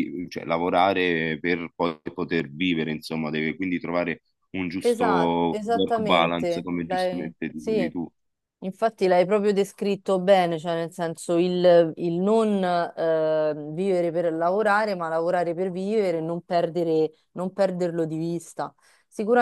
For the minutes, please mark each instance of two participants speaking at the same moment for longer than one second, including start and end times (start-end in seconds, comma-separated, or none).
4.8-7.9